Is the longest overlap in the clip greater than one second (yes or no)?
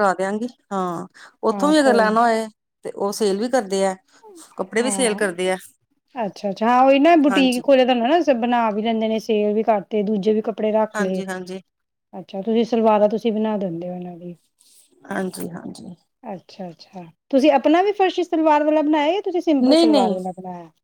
no